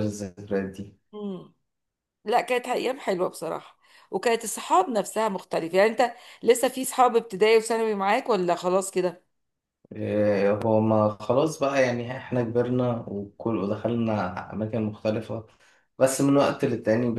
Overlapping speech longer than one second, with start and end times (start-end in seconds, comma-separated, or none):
none